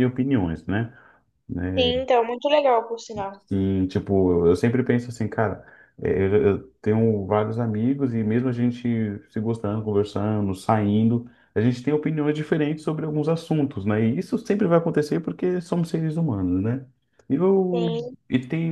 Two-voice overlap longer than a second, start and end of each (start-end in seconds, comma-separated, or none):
none